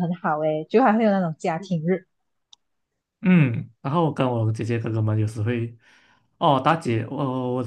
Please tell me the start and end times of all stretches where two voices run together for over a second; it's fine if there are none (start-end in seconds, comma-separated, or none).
none